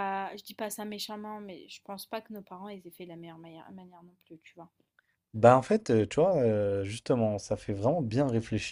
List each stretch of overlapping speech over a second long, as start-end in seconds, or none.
none